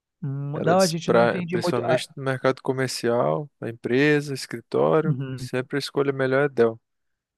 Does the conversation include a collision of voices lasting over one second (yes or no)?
yes